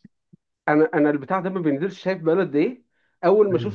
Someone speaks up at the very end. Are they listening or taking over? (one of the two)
listening